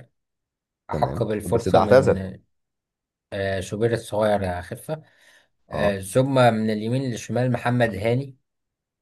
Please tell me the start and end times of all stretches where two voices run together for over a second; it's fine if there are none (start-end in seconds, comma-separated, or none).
0.9-2.2